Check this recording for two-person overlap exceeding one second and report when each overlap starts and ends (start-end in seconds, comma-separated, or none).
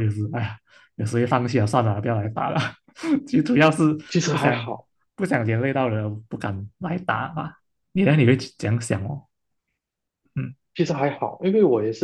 none